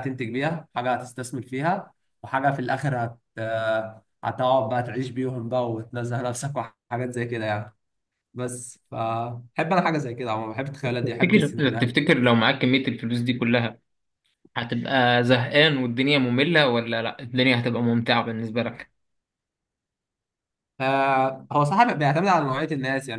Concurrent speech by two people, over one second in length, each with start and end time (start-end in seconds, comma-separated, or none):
10.8-12.2